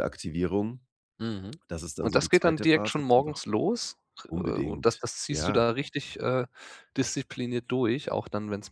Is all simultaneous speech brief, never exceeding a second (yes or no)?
no